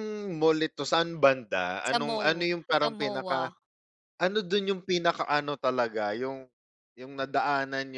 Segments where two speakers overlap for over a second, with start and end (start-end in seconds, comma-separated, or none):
1.9-3.5